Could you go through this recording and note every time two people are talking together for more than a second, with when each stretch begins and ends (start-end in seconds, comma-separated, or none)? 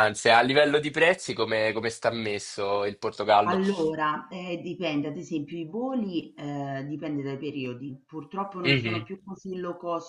none